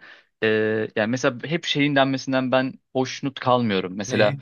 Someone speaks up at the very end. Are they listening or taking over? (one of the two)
listening